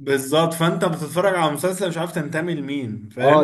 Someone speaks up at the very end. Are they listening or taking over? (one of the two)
taking over